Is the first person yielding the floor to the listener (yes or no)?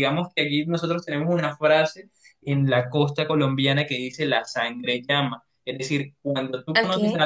no